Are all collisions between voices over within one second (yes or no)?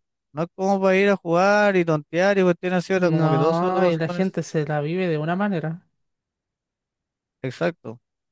no